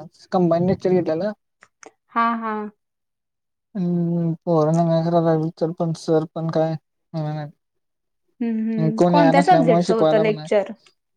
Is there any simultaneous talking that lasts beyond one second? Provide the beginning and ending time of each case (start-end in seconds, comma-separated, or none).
9.0-10.5